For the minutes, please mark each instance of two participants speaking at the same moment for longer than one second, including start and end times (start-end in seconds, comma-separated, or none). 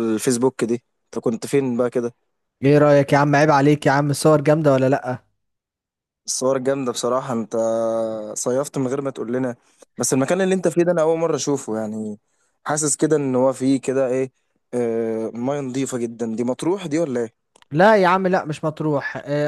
none